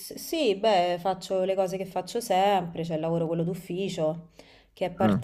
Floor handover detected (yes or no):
no